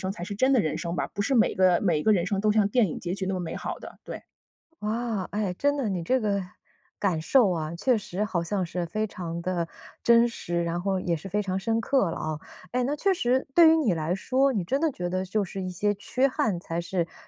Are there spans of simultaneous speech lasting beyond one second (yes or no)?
no